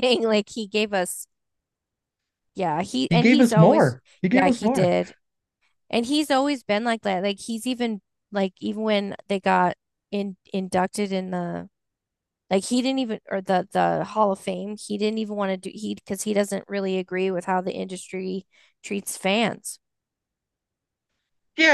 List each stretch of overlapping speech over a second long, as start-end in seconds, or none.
3.1-5.0